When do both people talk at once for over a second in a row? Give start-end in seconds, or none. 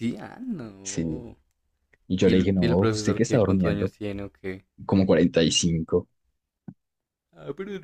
2.2-3.9